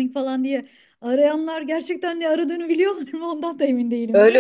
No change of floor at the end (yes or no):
no